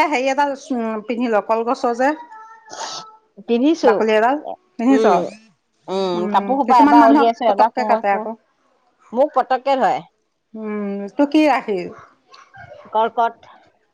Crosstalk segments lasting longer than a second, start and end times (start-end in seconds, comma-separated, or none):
6.2-8.2